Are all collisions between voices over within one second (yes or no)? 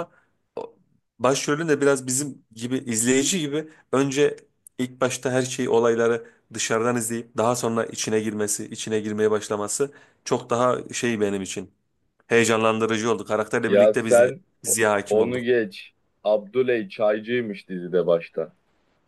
no